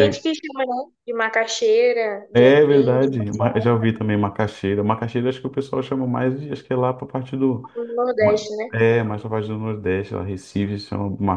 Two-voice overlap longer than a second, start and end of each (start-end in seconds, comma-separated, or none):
2.3-3.7